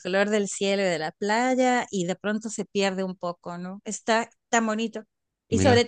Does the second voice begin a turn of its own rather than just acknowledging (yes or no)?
no